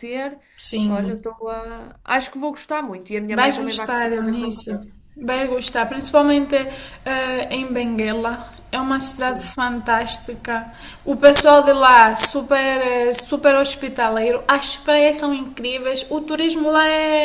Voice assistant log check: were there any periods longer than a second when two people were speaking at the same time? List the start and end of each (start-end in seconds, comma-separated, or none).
3.3-4.7